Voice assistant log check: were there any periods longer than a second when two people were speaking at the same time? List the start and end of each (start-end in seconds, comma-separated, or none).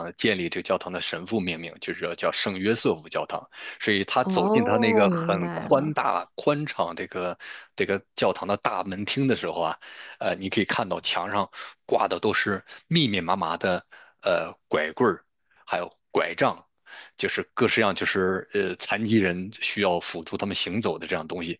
4.2-6.0